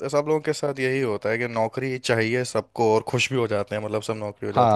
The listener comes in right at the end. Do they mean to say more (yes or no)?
no